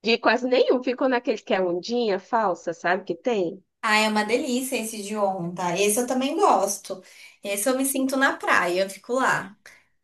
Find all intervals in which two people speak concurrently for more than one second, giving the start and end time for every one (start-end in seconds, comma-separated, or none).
none